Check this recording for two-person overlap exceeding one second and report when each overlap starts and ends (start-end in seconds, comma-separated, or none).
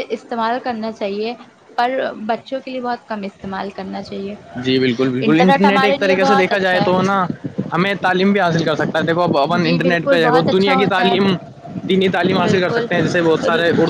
5.6-6.9, 9.5-11.3